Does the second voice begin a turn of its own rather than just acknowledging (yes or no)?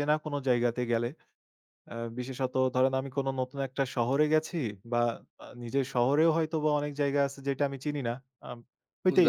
no